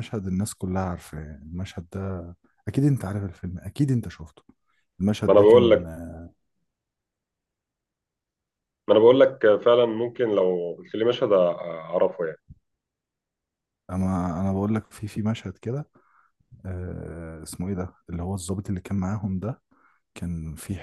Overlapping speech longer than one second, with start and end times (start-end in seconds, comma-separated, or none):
none